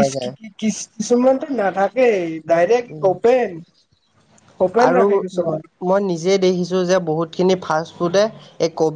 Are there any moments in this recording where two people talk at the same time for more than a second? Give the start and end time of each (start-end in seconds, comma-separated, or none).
none